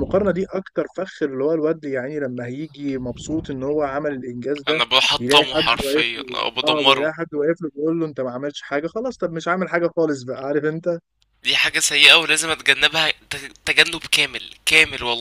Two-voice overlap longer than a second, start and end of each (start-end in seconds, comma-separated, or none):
4.7-7.1